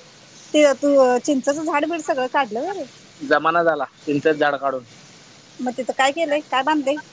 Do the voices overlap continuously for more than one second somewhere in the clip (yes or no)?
no